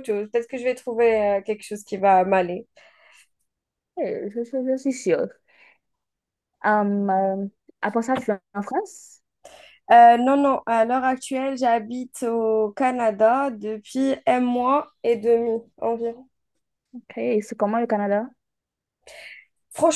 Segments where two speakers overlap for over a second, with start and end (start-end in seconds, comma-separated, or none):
none